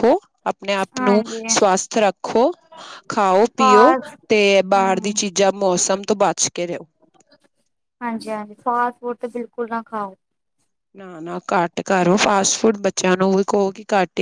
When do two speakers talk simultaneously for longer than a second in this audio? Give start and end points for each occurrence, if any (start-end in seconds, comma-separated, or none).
none